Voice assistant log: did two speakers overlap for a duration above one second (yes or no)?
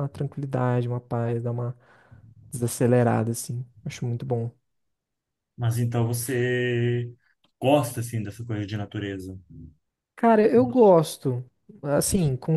no